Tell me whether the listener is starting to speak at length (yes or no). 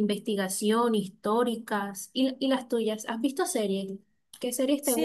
yes